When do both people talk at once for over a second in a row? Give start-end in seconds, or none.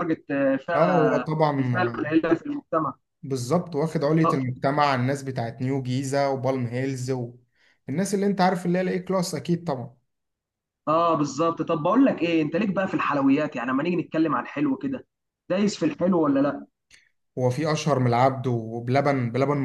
0.8-2.1